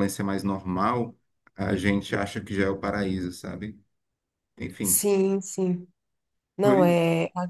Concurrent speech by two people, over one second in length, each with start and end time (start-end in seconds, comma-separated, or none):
none